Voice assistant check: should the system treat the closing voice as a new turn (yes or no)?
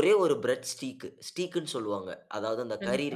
yes